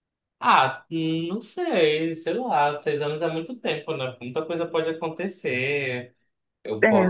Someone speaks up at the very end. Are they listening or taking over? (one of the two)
listening